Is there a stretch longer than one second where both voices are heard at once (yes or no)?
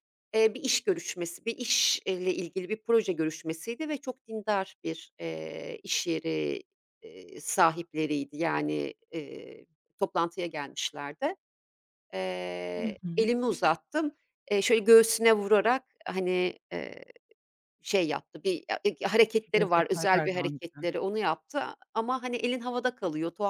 yes